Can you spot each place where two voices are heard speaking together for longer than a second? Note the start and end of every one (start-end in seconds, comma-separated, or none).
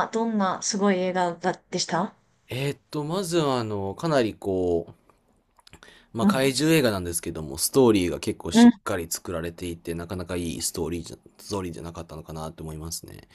none